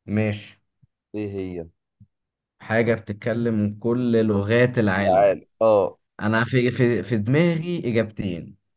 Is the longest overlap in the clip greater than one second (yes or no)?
no